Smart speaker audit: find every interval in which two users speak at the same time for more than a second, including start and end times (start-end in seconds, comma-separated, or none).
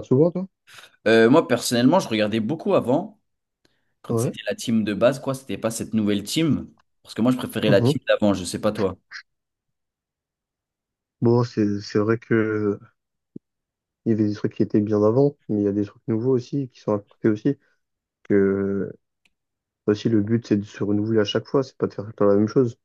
none